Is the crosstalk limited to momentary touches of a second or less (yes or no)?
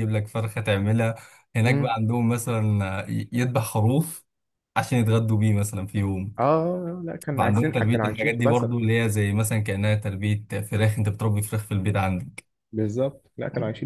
no